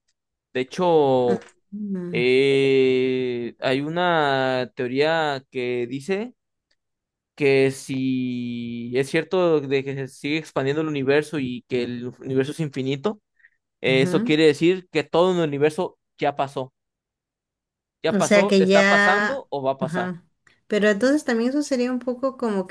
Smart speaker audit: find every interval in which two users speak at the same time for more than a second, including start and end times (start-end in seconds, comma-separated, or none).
18.1-20.1